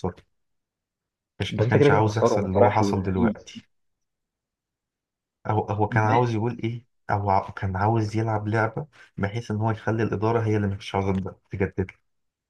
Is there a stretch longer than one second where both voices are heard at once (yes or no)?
yes